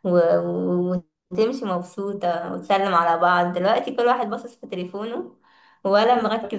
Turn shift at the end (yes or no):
no